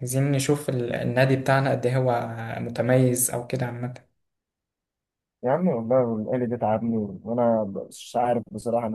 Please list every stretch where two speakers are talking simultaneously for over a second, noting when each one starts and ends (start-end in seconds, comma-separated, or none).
none